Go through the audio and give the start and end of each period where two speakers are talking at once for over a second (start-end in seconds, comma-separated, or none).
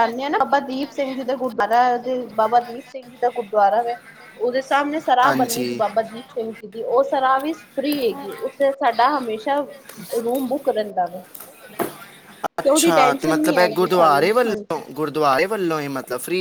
13.4-14.8